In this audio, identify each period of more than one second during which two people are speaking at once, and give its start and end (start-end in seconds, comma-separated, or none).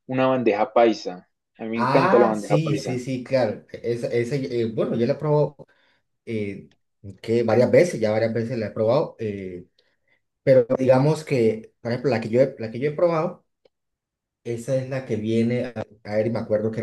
1.7-3.0